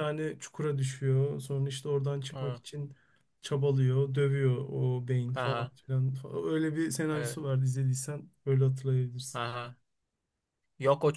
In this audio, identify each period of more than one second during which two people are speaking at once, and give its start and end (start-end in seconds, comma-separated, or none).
none